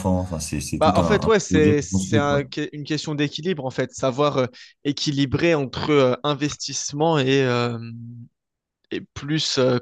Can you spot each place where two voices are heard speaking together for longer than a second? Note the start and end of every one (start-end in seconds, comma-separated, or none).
0.8-2.5